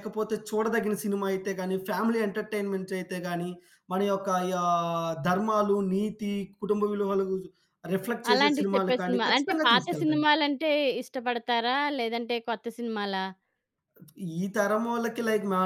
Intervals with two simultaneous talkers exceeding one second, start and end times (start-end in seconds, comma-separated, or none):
8.3-10.2